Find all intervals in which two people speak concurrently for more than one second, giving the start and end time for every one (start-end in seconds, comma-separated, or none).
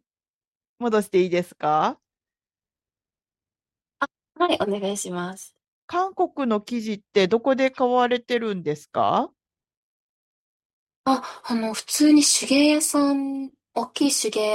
none